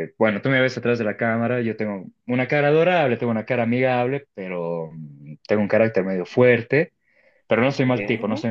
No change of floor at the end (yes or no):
yes